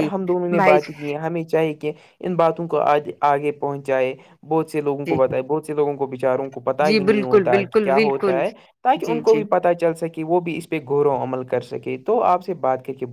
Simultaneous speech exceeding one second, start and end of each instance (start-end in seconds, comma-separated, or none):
6.8-8.4